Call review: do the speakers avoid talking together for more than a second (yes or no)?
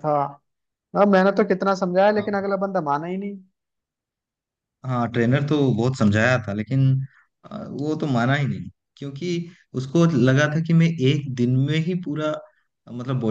yes